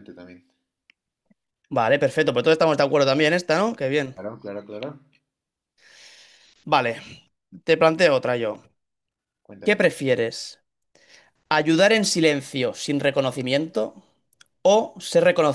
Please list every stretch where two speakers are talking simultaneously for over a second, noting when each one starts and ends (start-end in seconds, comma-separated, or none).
none